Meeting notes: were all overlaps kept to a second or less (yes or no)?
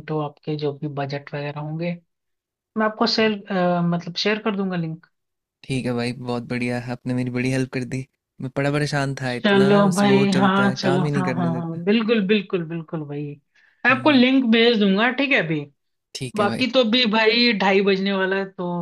no